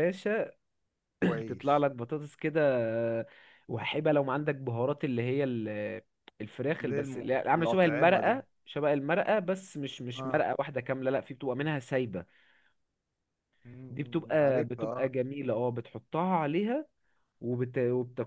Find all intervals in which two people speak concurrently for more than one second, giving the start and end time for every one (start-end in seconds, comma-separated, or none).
6.8-8.4, 13.9-15.1